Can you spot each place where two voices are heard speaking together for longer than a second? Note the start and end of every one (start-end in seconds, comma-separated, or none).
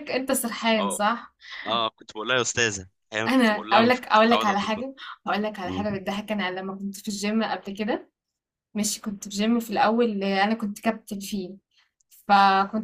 3.3-4.8